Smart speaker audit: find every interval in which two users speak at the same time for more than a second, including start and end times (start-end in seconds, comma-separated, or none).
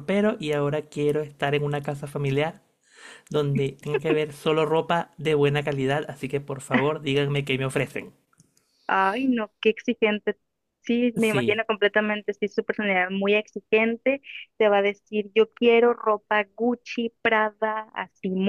none